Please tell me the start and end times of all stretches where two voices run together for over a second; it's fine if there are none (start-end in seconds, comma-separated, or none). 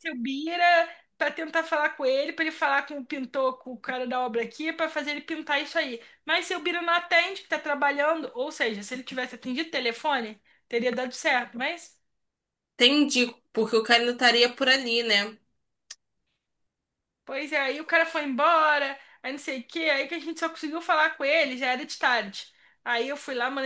none